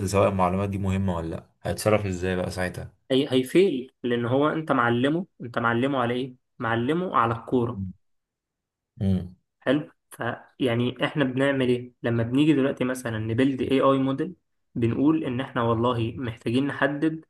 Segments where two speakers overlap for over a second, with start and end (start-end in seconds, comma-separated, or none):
none